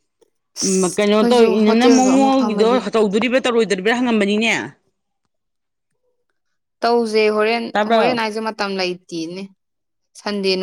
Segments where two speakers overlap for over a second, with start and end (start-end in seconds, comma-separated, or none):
0.9-2.8